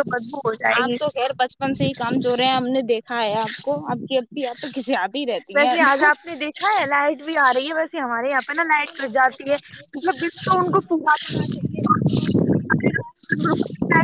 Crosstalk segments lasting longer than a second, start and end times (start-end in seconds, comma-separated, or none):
none